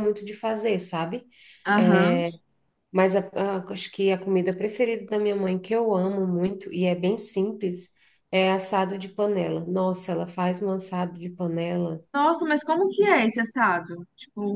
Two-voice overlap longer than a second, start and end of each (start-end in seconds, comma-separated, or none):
none